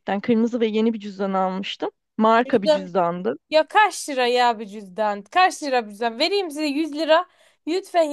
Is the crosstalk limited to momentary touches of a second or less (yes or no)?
yes